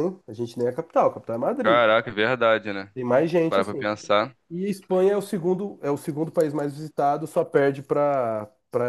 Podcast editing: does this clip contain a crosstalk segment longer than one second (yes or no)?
no